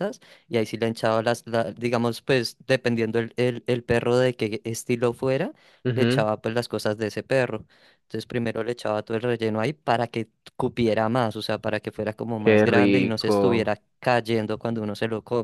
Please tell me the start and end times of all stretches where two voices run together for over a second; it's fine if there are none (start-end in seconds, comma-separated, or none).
12.4-13.7